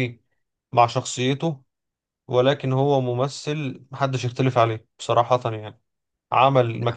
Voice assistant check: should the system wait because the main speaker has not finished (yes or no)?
yes